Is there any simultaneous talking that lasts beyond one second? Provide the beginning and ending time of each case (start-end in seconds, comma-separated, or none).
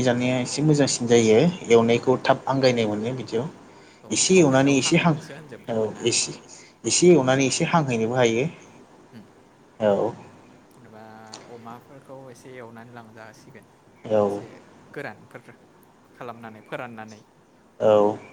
4.2-6.1